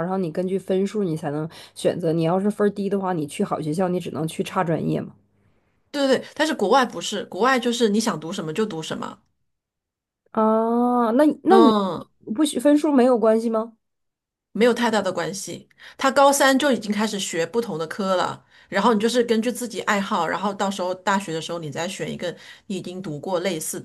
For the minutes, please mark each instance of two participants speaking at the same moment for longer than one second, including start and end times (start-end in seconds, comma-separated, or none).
none